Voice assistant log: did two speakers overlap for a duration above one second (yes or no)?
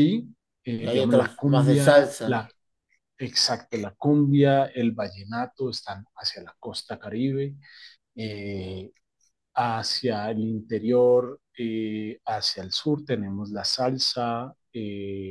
yes